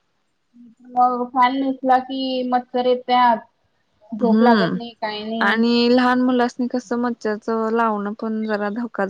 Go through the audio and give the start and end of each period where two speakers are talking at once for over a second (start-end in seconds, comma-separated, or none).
none